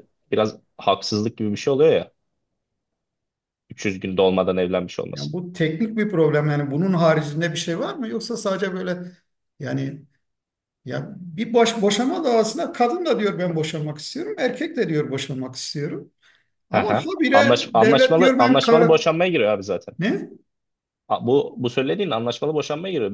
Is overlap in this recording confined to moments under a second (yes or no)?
no